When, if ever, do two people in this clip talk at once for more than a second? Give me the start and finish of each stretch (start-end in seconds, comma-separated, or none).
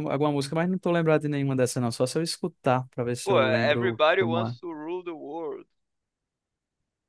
3.2-4.5